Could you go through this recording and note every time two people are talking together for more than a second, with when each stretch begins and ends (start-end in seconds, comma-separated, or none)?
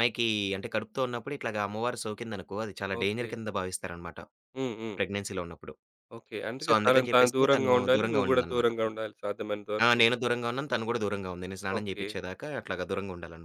6.6-8.9